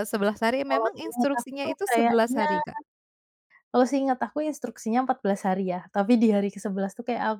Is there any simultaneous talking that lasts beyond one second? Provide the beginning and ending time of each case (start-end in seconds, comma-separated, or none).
0.7-2.5